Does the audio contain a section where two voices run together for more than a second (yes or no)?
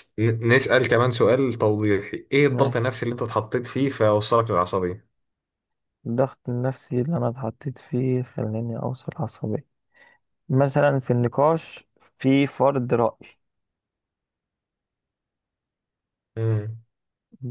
no